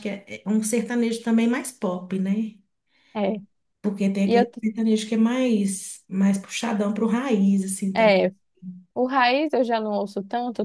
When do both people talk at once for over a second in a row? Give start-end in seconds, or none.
none